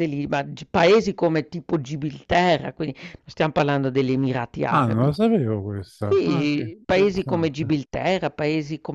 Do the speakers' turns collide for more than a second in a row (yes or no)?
yes